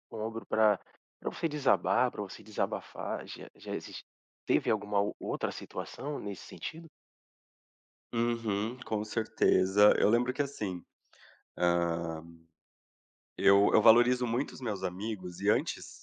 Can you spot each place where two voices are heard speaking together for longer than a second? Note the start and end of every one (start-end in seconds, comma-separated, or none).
none